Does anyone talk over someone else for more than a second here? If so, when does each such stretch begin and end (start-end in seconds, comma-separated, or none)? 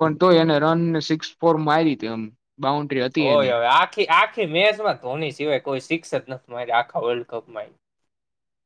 none